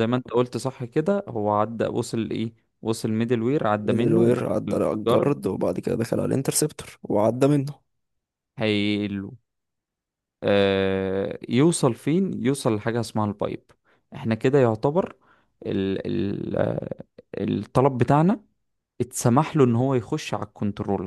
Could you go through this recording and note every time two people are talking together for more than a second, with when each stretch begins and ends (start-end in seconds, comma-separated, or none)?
3.8-5.3